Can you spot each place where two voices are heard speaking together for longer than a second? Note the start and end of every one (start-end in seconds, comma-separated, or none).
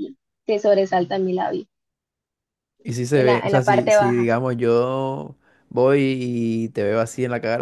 3.1-4.3